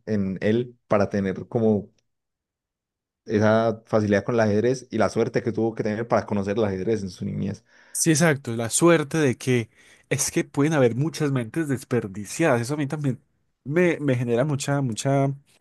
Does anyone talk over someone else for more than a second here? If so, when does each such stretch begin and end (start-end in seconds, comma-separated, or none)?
none